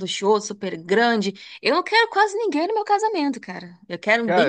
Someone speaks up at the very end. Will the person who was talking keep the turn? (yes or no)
no